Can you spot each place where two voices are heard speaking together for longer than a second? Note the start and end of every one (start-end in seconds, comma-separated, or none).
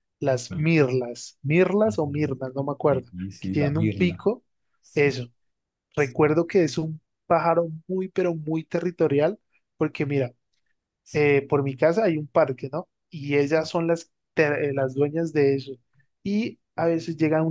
2.9-4.2